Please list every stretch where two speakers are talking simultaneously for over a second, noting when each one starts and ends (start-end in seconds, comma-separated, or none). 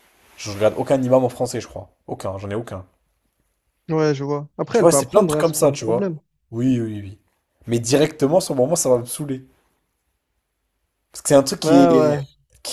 4.7-6.1